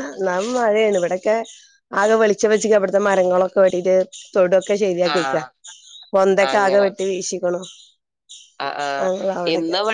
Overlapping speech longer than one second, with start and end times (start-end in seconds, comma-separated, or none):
none